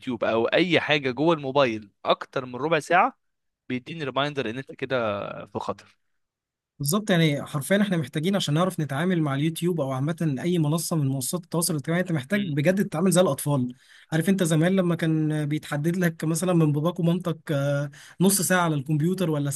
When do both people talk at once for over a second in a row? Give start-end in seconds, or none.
none